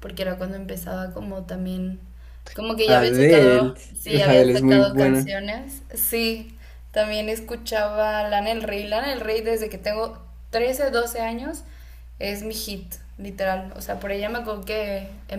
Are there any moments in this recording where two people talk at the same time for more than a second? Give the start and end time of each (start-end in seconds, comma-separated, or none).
2.9-5.3